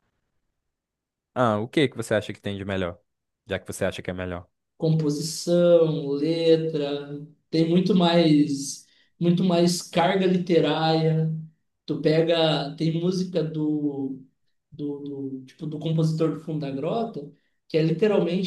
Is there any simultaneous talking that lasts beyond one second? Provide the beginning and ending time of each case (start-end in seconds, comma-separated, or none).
none